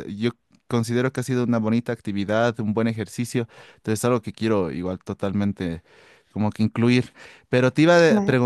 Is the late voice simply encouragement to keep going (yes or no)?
no